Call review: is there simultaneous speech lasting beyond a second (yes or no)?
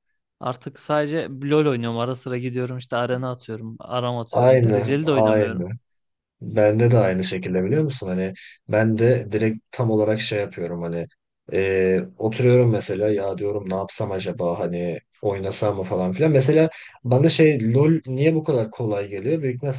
yes